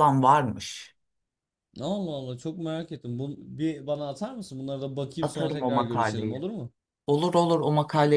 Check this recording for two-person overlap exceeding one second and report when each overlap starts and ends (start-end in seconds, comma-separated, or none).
5.2-6.4